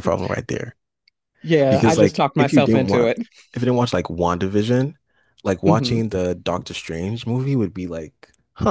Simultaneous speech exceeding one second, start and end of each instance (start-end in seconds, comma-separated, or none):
1.7-3.1